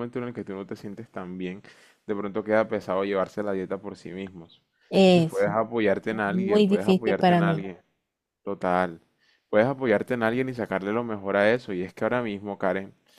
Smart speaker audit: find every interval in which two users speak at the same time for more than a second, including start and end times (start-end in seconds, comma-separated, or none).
6.1-7.6